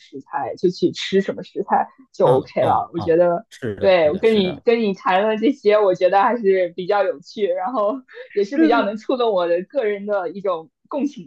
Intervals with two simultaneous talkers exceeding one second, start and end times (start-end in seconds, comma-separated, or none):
2.2-4.6